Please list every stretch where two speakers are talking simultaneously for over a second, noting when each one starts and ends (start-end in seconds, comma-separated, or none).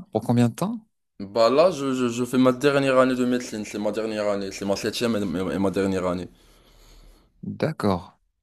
none